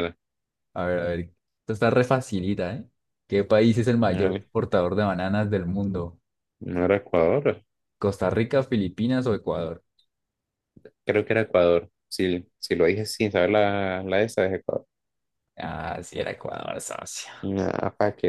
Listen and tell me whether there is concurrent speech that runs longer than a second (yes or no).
no